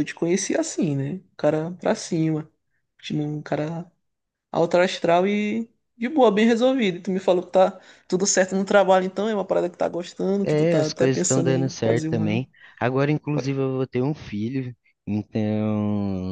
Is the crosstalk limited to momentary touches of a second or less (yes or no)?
no